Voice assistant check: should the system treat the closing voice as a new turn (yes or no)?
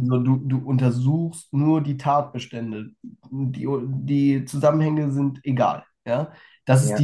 no